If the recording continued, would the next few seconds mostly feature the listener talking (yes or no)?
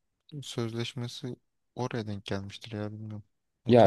yes